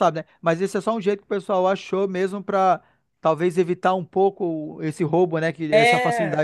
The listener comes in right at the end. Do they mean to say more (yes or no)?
yes